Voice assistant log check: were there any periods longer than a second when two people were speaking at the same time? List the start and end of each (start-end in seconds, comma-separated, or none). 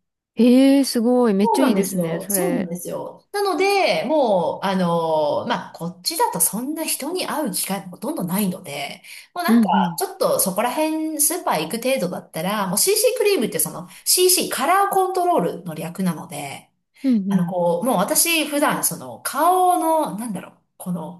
1.4-2.7